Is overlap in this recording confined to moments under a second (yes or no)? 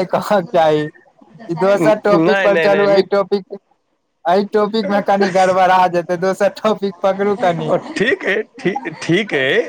no